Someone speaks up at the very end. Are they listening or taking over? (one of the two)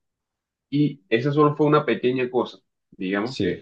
listening